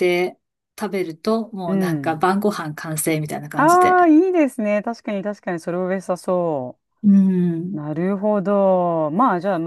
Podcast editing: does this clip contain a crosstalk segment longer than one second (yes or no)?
no